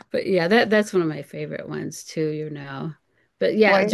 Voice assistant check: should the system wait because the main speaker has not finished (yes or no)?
yes